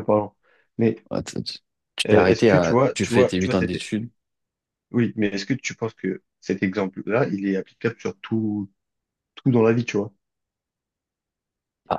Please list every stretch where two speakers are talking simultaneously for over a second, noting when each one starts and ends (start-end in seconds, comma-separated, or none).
2.1-3.8